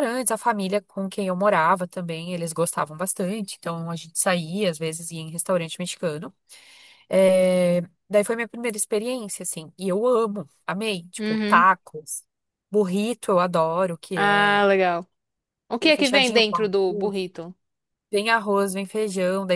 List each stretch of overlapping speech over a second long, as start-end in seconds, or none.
15.8-17.2